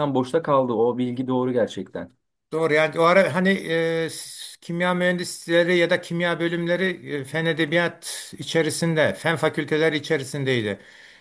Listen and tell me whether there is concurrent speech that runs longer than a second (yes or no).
no